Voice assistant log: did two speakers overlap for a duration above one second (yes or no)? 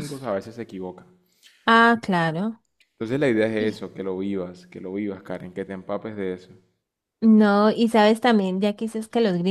no